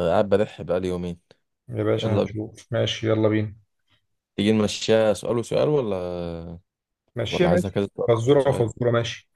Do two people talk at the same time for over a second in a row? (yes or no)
yes